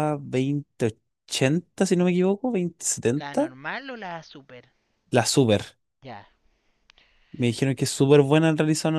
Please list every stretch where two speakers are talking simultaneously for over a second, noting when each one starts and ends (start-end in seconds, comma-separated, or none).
none